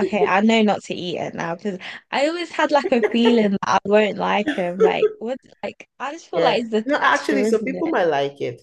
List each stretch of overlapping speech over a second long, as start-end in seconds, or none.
6.3-8.0